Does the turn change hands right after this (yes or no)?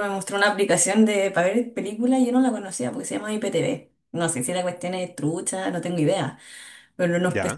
no